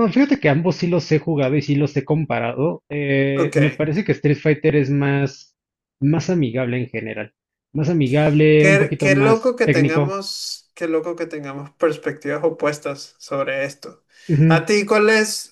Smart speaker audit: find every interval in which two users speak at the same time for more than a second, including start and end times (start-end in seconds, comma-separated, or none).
8.6-10.2